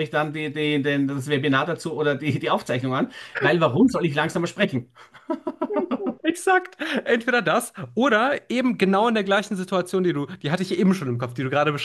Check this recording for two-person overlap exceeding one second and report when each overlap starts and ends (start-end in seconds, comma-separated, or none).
none